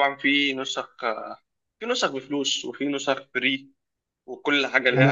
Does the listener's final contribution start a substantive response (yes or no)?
yes